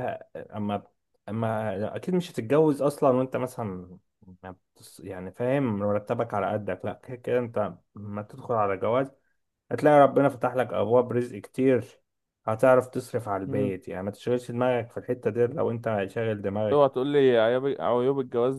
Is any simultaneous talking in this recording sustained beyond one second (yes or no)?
no